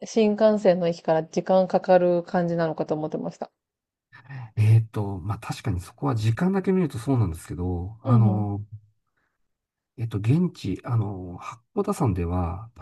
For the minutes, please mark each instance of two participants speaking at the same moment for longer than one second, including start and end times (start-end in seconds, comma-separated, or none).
none